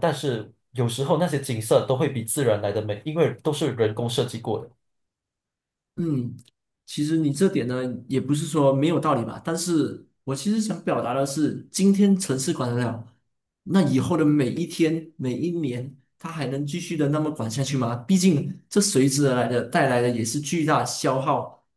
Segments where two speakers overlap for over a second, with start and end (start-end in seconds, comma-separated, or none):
none